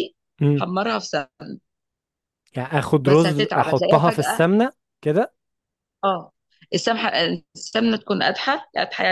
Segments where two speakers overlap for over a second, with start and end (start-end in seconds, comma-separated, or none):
3.0-4.4